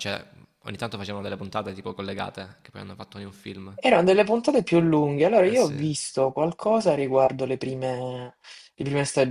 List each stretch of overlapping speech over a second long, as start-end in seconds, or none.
none